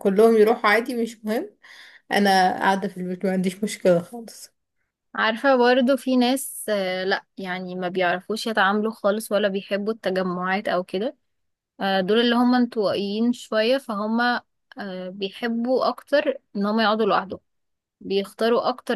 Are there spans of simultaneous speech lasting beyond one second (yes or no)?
no